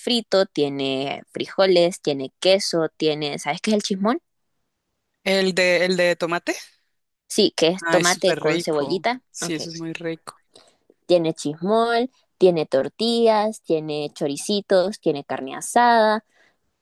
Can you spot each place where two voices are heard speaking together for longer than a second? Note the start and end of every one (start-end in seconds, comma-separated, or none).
7.8-9.6